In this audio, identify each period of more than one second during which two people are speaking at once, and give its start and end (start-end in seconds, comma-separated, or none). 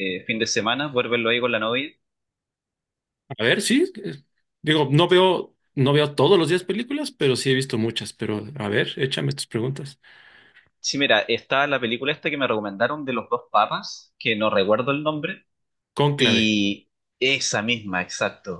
none